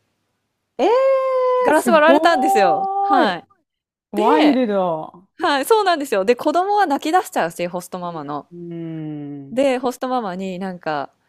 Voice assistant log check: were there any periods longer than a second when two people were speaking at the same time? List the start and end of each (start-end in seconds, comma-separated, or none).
1.7-3.4